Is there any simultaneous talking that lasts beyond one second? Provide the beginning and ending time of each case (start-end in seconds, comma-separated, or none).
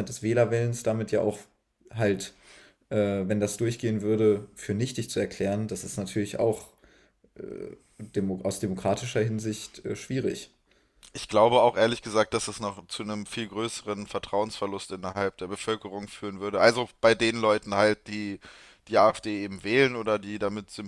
none